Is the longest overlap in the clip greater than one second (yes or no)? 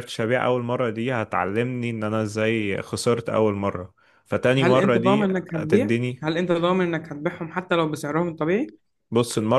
yes